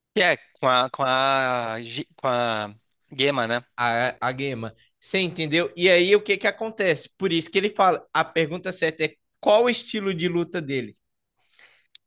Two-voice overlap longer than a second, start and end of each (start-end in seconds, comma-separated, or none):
none